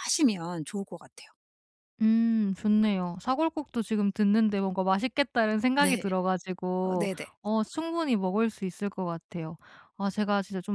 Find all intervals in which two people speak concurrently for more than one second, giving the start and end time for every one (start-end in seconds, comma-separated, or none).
none